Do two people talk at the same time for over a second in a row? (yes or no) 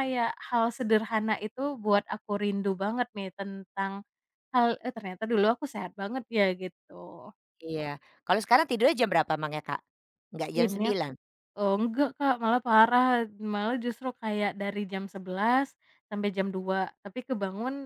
no